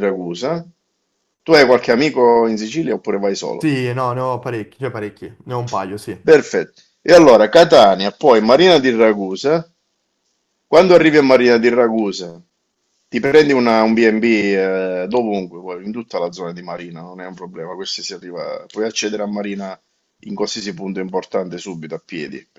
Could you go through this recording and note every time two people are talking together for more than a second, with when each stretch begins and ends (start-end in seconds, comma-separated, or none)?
none